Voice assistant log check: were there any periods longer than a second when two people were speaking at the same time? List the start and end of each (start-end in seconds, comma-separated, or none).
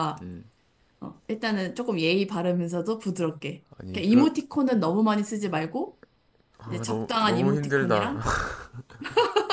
6.8-8.1